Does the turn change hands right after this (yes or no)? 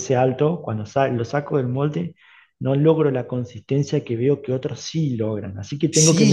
yes